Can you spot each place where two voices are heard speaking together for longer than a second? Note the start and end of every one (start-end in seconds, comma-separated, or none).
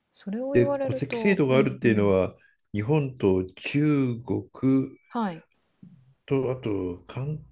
0.5-2.1